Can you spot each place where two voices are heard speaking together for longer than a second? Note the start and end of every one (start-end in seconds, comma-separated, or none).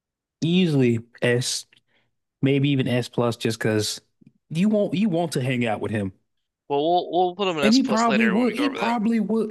7.6-9.0